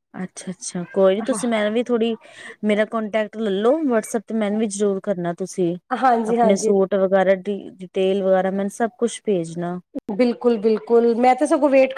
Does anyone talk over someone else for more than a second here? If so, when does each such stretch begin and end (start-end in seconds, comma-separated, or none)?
none